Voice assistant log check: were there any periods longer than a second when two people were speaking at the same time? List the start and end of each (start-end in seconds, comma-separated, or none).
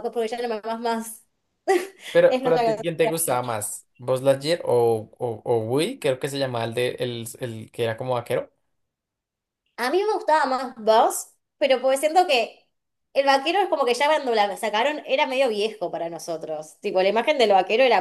2.3-3.5